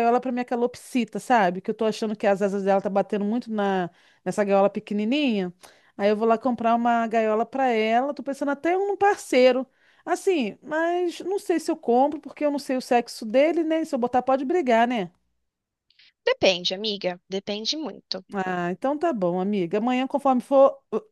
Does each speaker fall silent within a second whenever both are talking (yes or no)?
yes